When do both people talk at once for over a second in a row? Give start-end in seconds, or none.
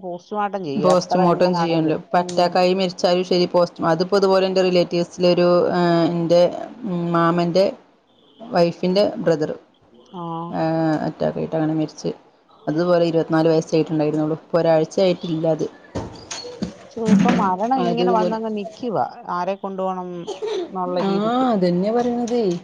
0.8-2.4